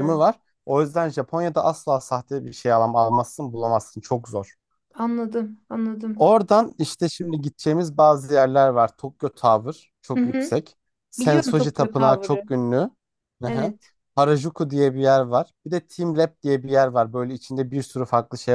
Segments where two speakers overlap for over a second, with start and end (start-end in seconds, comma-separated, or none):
11.2-12.4